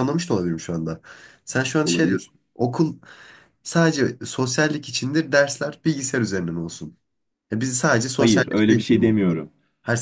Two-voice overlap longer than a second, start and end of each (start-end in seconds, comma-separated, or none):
8.1-9.4